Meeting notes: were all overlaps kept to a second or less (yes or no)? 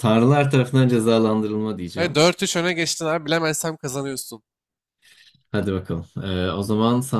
yes